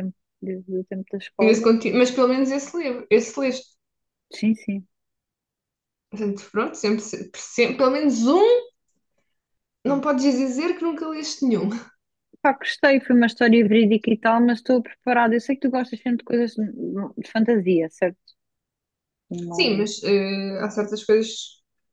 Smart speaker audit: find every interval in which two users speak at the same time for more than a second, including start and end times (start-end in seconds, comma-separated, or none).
none